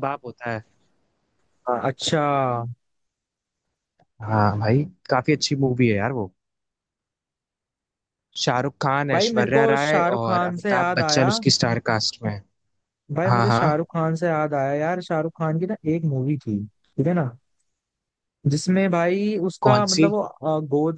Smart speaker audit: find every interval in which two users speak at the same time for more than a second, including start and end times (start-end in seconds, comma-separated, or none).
9.1-11.3